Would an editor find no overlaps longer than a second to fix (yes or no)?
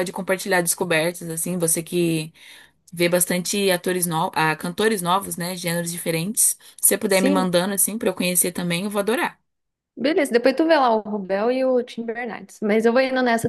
yes